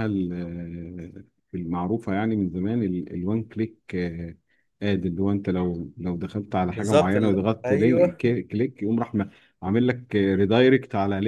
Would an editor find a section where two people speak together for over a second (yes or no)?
yes